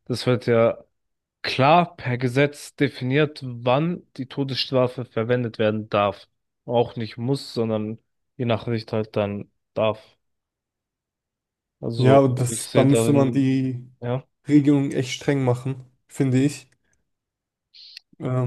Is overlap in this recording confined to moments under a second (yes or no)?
no